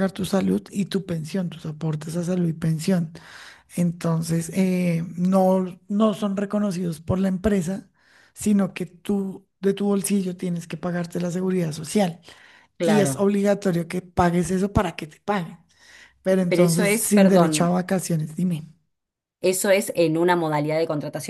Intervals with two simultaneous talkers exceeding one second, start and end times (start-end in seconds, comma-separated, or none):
16.5-17.8